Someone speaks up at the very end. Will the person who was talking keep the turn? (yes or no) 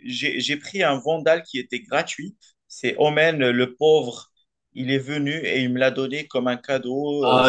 no